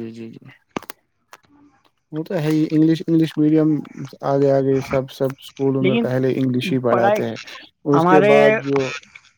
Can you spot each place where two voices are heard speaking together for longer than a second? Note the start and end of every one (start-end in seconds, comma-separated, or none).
5.8-7.2